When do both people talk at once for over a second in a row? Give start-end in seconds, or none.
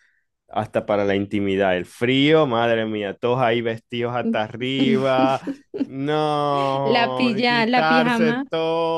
6.8-8.4